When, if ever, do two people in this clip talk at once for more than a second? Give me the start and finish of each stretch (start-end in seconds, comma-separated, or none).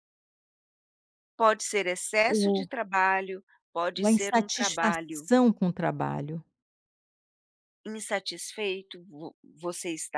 4.0-5.3